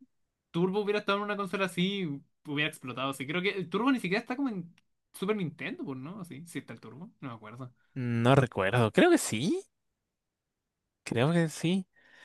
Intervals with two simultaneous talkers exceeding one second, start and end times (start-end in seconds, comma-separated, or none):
none